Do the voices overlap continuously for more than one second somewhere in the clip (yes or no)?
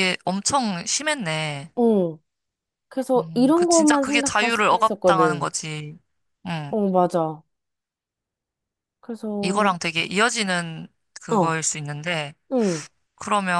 yes